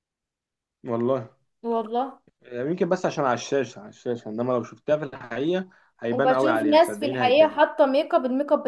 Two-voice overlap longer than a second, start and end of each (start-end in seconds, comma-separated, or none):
6.1-7.6